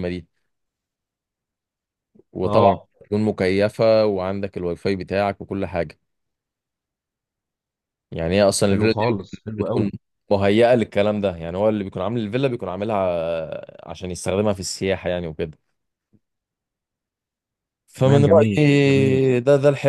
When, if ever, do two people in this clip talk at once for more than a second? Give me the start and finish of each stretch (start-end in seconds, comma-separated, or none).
8.7-9.9, 17.9-19.2